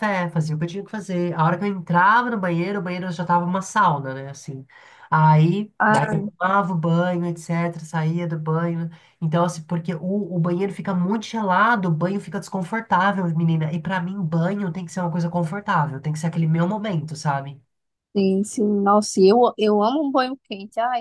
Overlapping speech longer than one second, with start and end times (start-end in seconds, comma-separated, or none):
none